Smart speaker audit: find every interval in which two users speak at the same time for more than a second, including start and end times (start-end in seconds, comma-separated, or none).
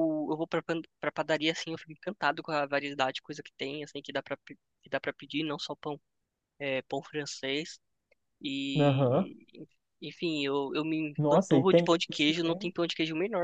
11.2-12.7